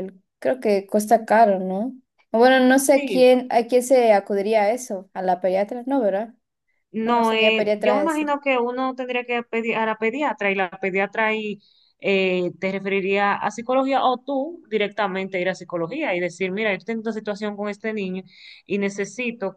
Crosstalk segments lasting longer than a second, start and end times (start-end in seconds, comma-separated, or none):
7.0-8.3